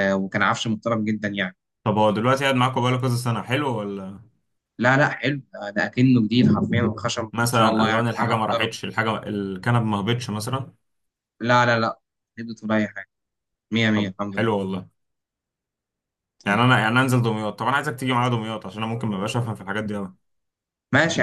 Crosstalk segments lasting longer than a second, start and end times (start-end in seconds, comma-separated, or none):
7.3-8.7